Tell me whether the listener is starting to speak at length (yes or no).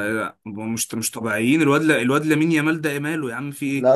yes